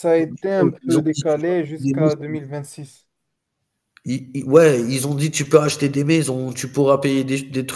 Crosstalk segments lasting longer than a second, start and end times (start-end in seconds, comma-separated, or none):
0.8-2.4